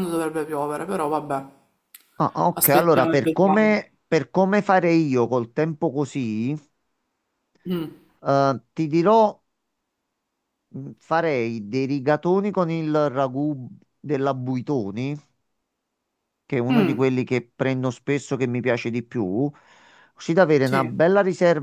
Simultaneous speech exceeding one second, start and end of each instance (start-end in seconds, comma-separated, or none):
2.5-3.8